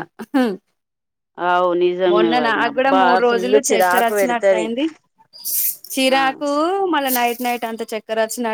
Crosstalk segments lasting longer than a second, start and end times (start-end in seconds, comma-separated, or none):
2.1-4.7